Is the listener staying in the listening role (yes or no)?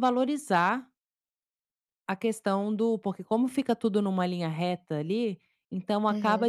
yes